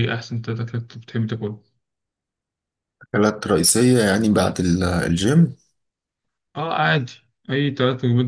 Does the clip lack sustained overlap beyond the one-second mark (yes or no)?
yes